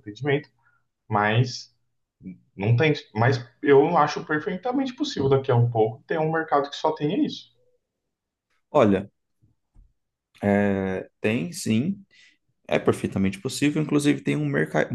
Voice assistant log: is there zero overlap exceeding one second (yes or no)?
yes